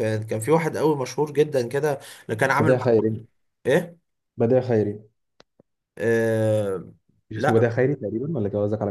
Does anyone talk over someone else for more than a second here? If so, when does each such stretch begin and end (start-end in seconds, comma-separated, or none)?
none